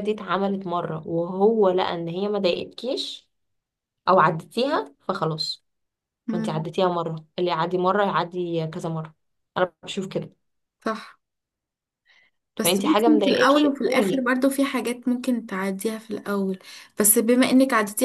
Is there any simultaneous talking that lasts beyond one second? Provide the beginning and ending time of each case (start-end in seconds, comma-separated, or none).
12.6-14.3